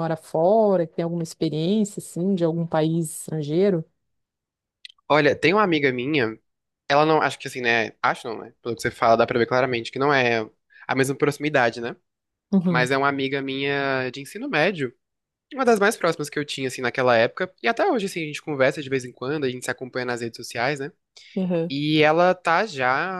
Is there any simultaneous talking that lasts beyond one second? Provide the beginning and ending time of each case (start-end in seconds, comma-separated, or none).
none